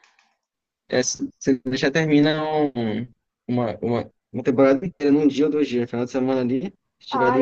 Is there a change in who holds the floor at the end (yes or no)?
yes